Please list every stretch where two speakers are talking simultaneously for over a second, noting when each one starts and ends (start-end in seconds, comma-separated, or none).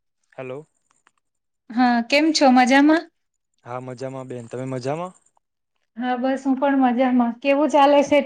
none